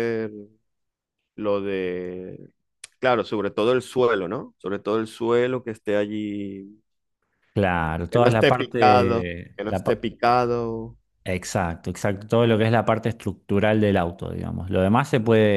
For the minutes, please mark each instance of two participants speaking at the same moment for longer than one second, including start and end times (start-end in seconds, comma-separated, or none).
8.1-10.1